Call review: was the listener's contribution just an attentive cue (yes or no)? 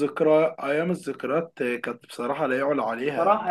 no